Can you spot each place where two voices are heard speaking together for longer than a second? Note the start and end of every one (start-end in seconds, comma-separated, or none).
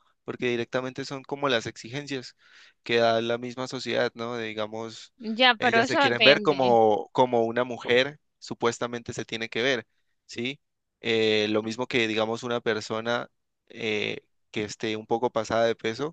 5.6-6.8